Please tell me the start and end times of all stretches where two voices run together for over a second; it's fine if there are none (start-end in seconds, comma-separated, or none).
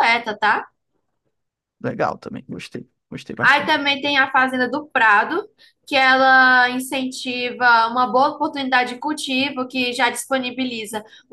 none